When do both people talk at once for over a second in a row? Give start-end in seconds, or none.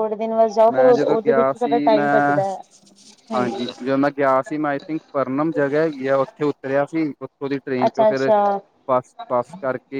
0.7-2.4